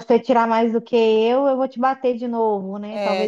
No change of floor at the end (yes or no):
no